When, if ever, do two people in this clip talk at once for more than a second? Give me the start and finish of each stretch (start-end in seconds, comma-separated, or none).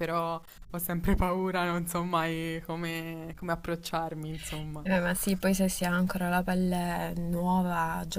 none